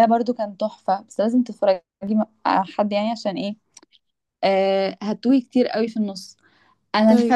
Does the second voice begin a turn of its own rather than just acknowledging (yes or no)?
no